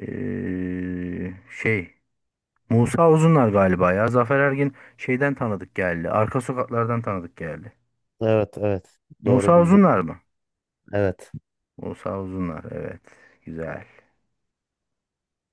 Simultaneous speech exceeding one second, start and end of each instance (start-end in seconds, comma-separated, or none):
none